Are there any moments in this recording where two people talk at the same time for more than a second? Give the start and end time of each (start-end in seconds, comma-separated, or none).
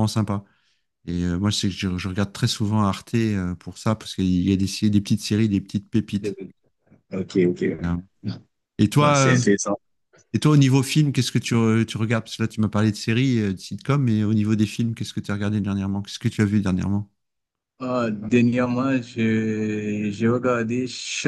none